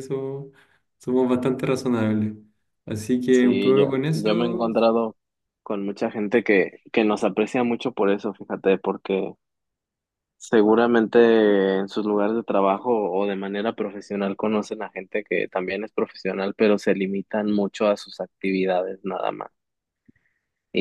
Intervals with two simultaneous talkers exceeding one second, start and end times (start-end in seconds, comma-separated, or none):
3.3-4.7